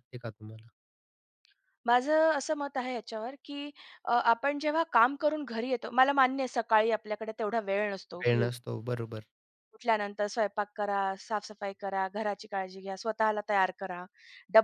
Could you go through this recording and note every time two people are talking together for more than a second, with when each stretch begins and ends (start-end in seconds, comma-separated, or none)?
none